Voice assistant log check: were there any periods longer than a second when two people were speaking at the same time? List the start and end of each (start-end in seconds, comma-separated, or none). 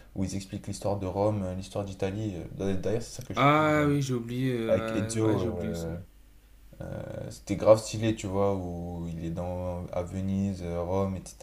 4.7-5.9